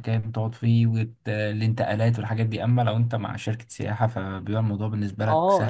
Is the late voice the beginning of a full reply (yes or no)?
yes